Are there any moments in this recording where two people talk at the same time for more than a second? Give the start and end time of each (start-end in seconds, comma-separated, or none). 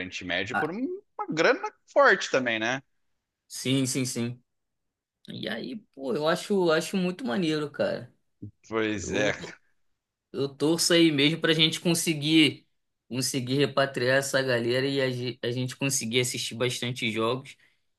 none